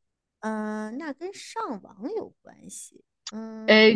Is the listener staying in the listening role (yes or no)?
no